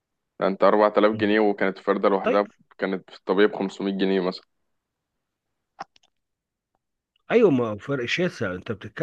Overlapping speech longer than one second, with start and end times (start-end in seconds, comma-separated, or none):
none